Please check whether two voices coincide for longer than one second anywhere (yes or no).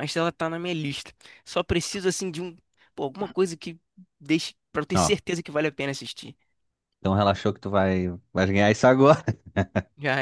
no